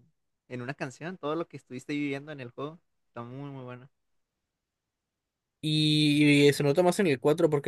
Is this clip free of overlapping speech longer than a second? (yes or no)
yes